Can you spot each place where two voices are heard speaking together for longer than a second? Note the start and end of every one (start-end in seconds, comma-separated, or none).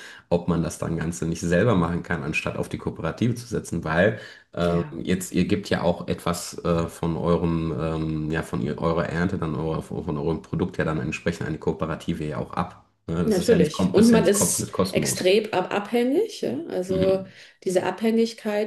13.2-15.4